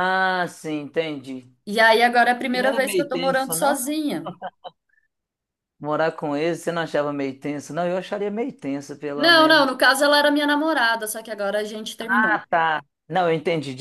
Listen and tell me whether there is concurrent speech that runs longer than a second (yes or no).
yes